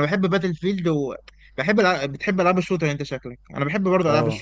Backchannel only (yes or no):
yes